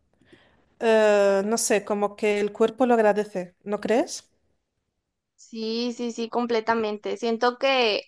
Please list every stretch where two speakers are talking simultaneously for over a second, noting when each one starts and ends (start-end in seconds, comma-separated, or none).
none